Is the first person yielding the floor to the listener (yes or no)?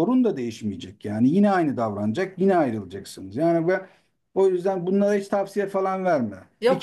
yes